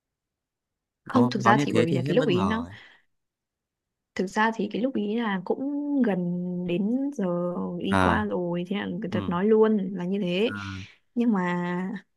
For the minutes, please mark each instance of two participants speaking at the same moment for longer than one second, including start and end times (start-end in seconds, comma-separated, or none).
1.0-2.6